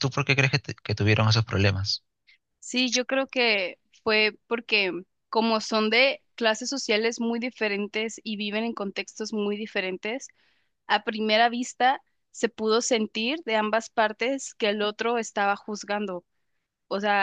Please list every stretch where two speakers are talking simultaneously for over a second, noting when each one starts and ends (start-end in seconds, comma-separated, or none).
none